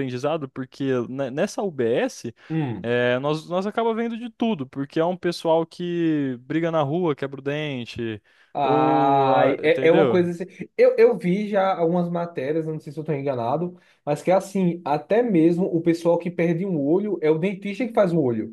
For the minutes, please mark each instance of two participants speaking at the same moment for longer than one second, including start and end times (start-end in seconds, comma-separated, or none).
8.6-10.2